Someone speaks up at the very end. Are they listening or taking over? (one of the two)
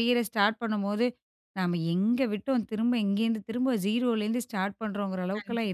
taking over